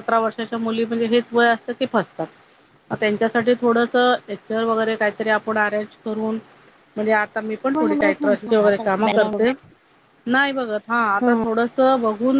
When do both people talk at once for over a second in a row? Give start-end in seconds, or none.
7.8-9.3